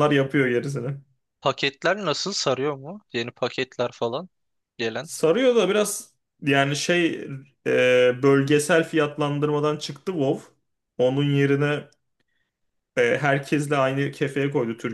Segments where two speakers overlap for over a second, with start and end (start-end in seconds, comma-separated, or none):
none